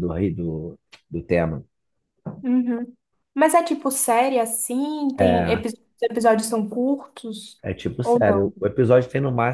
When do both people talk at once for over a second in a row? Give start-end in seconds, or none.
none